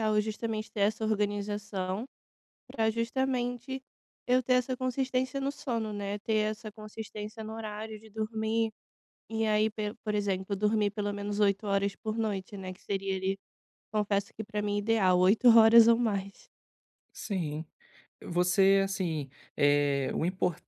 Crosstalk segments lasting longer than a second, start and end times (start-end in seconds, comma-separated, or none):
none